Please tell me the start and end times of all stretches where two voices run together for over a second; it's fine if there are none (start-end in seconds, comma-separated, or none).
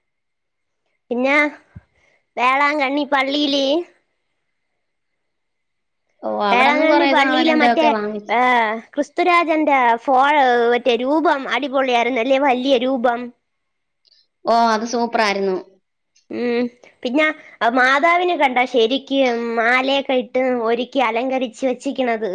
6.5-8.3